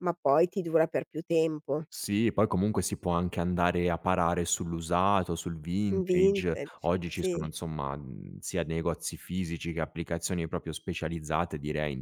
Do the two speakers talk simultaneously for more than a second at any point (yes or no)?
yes